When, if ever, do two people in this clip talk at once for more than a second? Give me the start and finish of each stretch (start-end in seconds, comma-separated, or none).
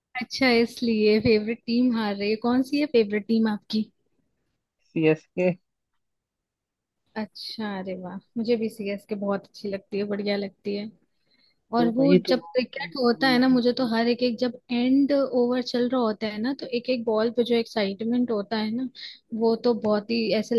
11.8-13.4